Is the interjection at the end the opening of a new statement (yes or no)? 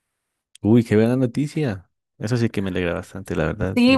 yes